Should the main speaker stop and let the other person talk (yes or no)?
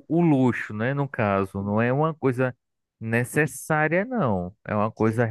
no